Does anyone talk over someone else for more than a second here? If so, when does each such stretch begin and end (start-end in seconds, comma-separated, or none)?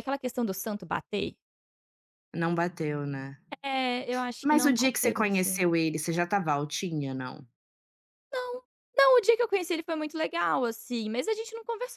4.4-5.7